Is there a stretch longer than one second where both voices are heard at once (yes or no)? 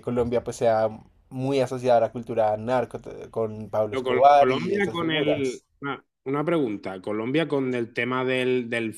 yes